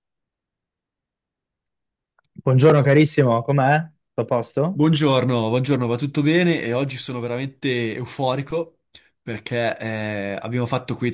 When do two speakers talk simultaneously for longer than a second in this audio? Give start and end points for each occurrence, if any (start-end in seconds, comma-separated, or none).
none